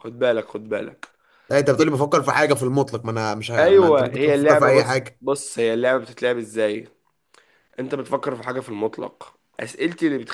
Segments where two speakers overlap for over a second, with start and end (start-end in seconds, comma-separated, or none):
3.6-5.2